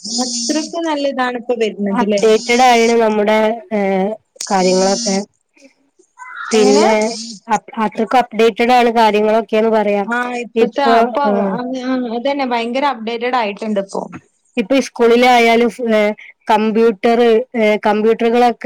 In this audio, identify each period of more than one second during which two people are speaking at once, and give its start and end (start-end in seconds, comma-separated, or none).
none